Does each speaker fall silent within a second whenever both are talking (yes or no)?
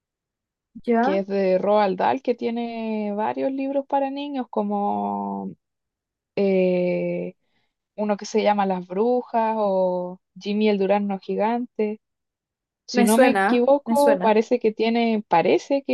no